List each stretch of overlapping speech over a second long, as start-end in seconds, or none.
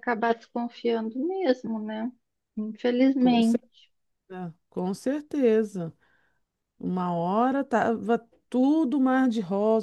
none